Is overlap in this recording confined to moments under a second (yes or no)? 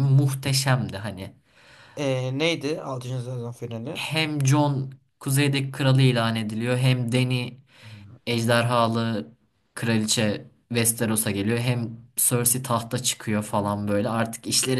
yes